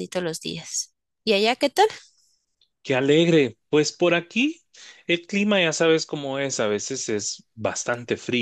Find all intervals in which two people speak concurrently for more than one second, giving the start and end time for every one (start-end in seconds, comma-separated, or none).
none